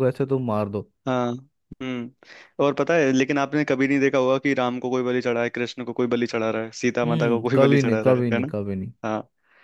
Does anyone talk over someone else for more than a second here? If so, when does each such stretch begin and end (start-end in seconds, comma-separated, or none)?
7.0-8.5